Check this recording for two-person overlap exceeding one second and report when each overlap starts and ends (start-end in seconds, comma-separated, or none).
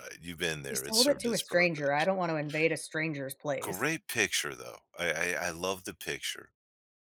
0.7-2.1